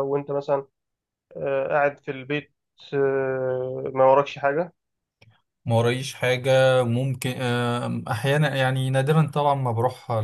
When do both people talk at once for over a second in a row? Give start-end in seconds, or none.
none